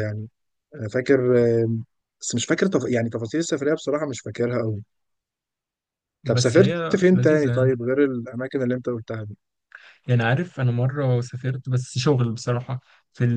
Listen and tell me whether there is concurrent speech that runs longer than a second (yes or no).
yes